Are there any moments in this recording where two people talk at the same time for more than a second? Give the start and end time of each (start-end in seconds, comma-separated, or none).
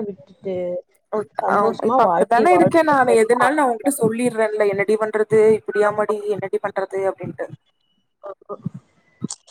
1.5-3.5